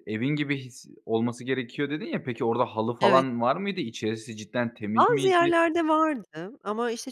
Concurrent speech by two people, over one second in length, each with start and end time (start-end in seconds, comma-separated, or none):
none